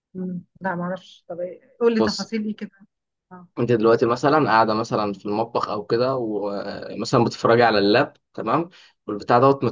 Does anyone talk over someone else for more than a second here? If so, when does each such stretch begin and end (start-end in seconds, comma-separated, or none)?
none